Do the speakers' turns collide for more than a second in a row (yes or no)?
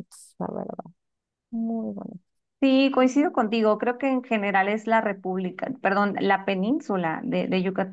no